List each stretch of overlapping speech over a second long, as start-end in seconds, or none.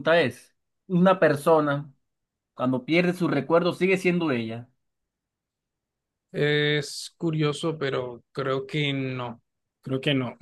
none